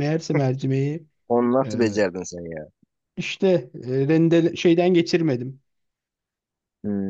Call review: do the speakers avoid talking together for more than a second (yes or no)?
yes